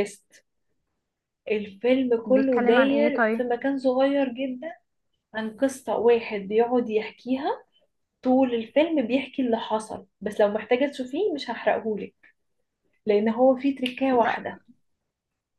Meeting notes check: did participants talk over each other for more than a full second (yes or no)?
yes